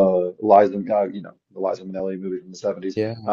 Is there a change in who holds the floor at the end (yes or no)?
no